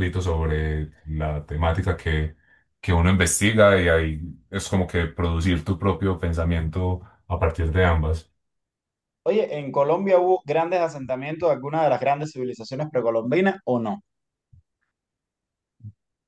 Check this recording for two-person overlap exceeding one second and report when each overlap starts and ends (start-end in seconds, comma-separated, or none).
none